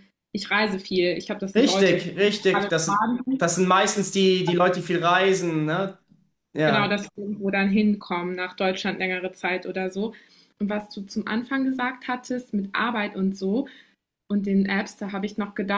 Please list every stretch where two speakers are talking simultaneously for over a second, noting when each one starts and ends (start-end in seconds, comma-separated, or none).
1.6-3.5